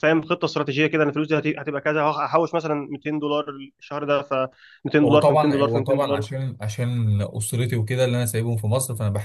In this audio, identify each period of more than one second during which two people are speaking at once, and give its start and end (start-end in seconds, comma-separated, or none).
5.0-6.2